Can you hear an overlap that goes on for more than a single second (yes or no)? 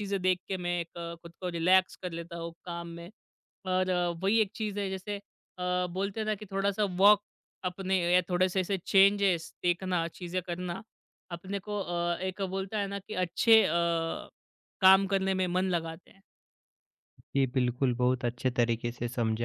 no